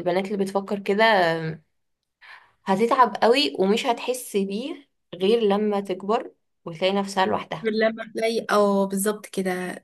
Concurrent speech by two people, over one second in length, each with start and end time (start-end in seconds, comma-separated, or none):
none